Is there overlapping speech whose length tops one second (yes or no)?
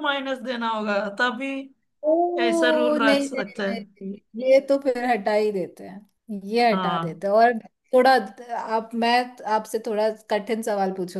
yes